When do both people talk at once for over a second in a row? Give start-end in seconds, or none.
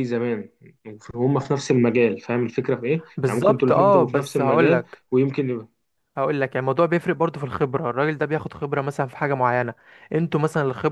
3.2-5.0